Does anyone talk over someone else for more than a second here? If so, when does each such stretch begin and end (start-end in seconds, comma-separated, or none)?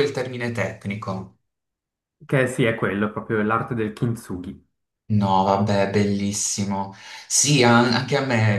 none